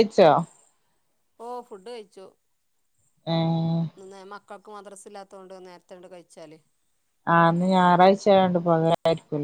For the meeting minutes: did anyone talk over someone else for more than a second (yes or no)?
no